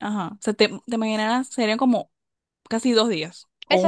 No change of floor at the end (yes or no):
no